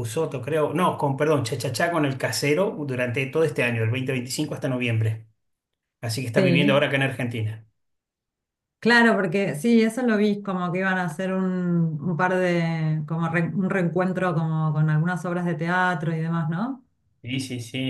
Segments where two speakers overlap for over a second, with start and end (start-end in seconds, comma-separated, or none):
none